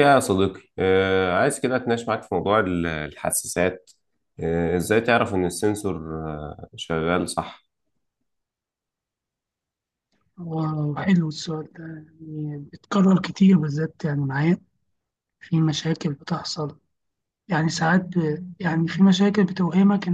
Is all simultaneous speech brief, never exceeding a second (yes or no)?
yes